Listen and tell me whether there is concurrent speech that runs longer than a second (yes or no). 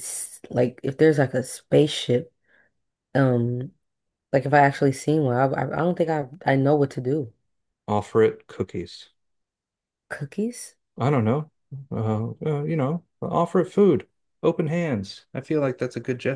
no